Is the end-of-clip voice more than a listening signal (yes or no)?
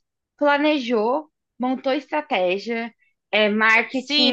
yes